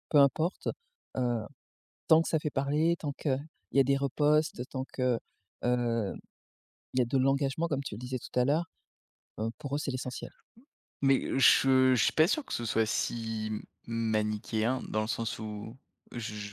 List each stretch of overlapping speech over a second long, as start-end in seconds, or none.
none